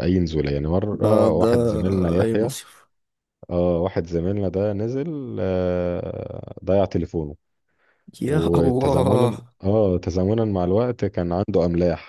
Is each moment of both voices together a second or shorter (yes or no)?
no